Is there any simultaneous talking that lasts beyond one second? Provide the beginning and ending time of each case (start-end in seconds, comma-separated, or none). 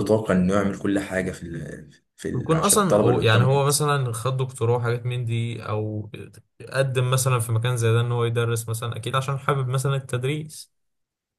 2.3-3.7